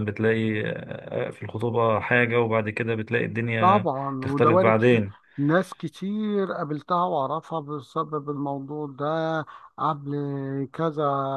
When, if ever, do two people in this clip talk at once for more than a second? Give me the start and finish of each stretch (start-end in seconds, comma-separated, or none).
3.6-5.0